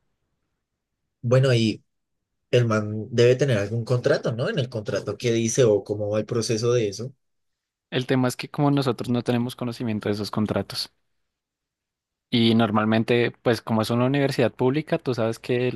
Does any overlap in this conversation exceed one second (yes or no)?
no